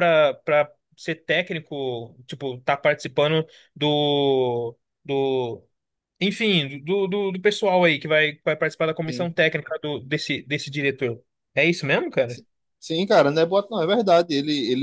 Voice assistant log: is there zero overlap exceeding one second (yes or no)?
yes